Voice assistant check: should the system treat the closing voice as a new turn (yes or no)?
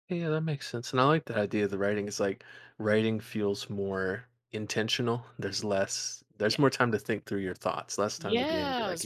yes